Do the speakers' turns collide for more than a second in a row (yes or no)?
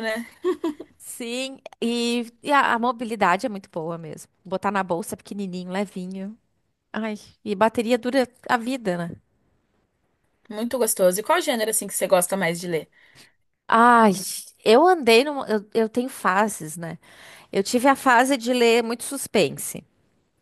no